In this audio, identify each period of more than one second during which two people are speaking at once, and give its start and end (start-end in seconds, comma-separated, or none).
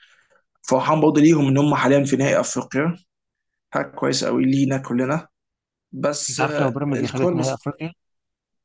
6.3-7.6